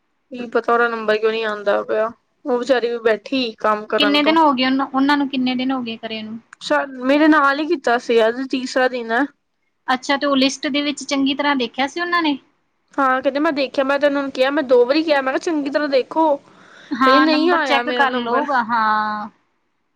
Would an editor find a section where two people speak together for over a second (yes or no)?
yes